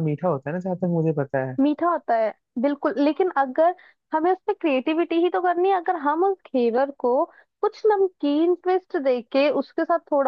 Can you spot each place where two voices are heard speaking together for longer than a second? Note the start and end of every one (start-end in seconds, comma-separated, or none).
none